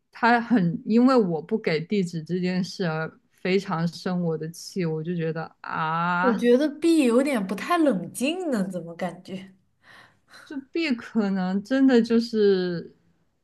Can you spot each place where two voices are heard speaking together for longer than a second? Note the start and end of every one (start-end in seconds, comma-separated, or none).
none